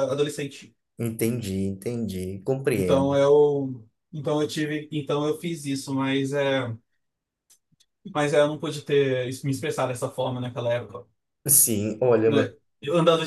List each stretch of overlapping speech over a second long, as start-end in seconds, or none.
none